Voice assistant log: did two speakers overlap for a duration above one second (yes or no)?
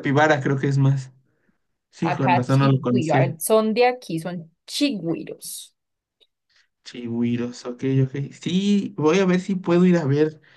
yes